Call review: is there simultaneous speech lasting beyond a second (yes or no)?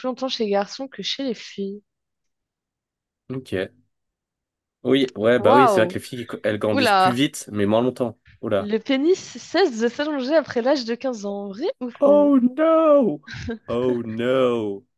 no